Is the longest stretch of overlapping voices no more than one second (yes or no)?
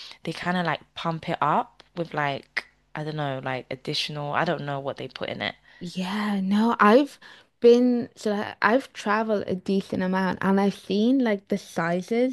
yes